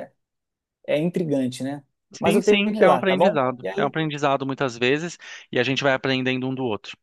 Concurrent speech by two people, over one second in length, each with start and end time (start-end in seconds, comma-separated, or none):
2.2-4.0